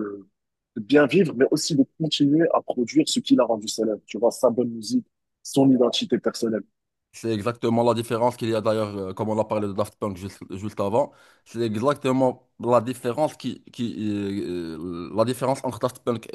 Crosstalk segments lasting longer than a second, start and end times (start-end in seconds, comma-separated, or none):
none